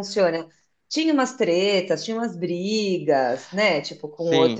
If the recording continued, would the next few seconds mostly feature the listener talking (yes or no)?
yes